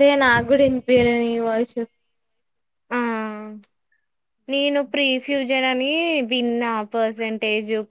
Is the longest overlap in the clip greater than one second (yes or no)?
no